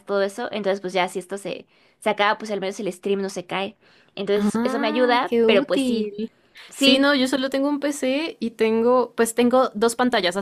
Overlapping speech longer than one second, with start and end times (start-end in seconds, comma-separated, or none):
4.3-6.1